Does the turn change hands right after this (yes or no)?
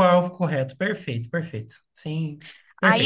yes